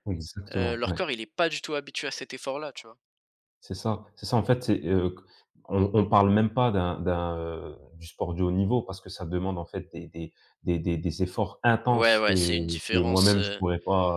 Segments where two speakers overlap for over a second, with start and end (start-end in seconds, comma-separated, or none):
11.9-13.6